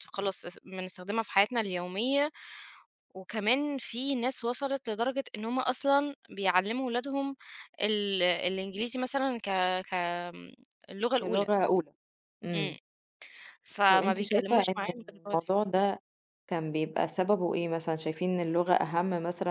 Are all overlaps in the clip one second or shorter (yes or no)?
no